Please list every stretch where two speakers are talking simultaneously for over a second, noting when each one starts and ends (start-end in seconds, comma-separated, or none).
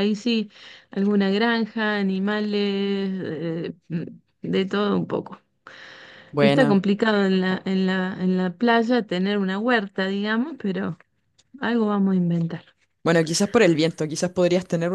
none